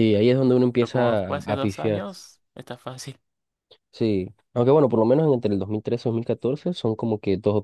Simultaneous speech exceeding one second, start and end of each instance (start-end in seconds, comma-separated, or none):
0.8-2.0